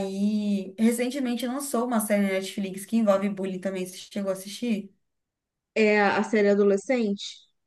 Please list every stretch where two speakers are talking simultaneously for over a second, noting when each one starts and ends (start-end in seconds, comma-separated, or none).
none